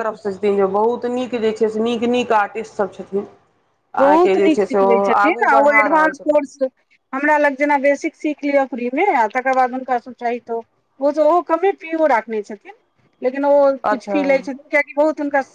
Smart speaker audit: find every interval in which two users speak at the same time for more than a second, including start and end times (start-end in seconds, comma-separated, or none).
4.0-6.5